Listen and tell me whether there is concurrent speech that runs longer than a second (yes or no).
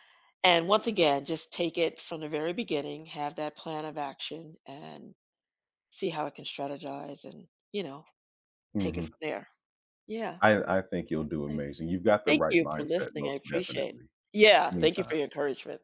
yes